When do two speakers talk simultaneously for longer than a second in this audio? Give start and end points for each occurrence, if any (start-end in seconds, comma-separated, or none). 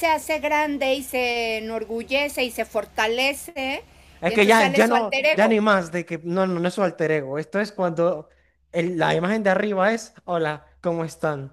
4.3-5.6